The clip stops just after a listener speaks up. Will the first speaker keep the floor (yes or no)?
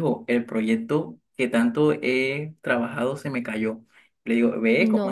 yes